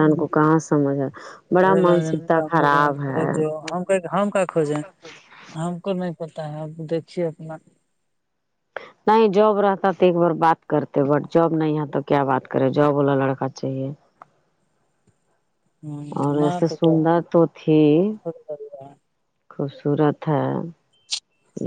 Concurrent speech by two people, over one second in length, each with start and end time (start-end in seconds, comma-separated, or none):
1.6-3.2